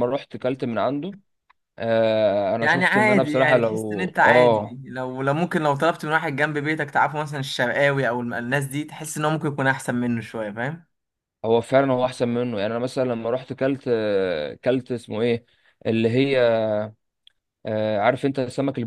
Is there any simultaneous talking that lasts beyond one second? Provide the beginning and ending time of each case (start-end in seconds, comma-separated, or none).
2.6-4.8